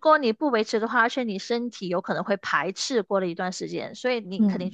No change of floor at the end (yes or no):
yes